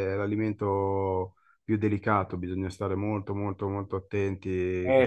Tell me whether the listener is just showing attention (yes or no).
no